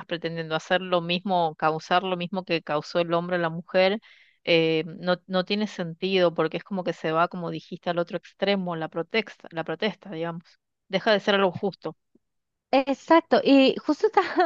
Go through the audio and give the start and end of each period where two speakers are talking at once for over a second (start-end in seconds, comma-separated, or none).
none